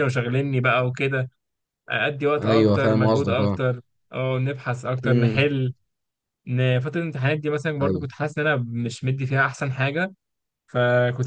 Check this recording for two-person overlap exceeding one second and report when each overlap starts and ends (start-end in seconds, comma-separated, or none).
2.4-3.6